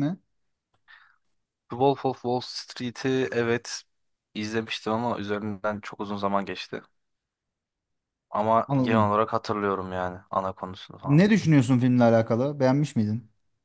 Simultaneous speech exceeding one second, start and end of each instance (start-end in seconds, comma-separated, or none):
none